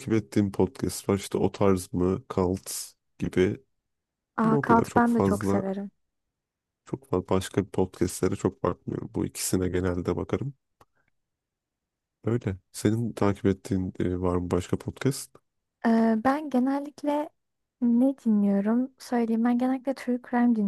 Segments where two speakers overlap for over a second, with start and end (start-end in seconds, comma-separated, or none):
4.4-5.6